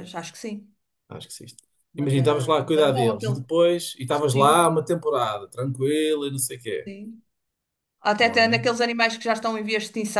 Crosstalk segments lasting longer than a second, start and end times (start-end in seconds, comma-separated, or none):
2.0-3.4